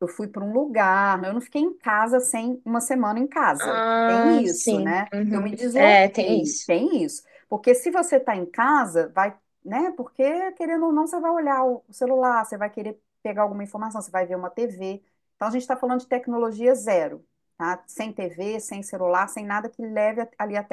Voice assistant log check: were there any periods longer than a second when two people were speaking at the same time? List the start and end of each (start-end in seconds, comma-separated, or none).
3.6-6.7